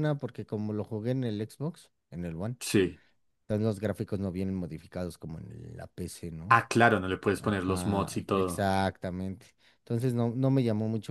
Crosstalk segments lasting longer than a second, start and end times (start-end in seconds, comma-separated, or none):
7.4-8.7